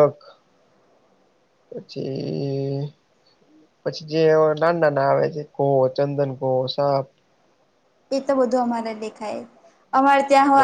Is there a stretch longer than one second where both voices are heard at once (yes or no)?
no